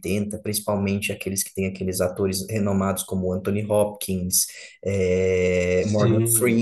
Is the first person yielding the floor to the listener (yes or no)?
no